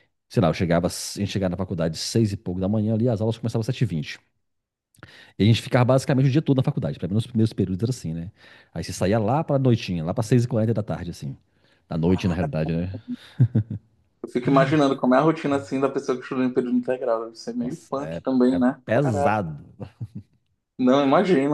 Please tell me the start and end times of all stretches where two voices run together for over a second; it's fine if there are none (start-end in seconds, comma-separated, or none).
17.6-19.4